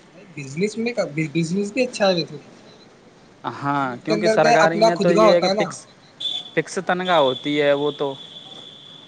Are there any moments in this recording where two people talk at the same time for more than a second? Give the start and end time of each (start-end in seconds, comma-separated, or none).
3.7-5.6